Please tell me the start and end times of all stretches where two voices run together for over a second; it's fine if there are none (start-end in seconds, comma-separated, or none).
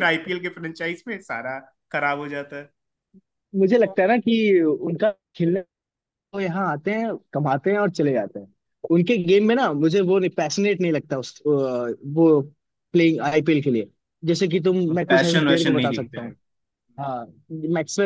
14.9-16.3